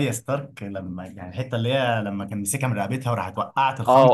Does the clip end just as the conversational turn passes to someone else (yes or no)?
yes